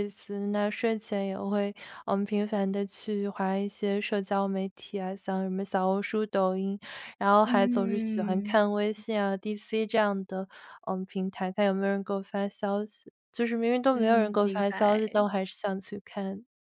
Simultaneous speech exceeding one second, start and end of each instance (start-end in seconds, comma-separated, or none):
7.4-8.8, 13.9-15.2